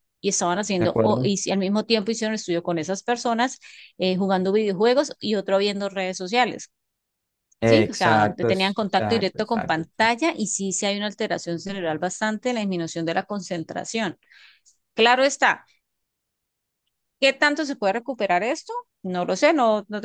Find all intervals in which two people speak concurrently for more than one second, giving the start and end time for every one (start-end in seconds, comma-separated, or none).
7.6-10.1